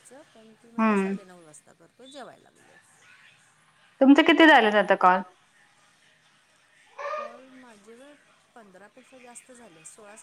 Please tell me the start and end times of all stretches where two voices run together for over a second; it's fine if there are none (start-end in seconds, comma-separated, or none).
none